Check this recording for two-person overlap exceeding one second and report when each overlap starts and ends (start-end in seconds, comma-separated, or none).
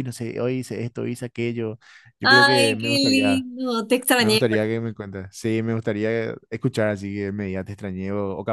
2.2-3.5